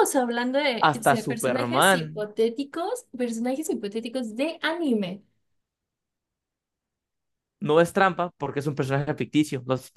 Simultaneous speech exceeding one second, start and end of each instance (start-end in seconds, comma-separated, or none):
0.8-2.3